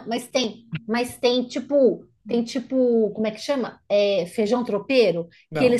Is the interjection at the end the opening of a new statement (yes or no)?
yes